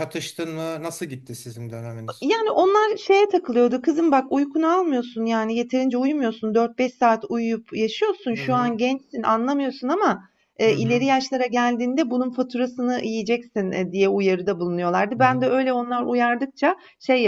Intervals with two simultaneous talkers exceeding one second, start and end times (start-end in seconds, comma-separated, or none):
none